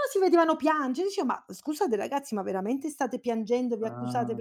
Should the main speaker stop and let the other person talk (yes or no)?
no